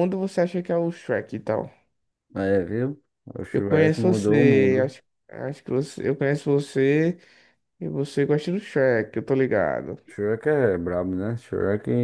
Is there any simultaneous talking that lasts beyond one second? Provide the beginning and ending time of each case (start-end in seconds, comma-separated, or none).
3.5-4.9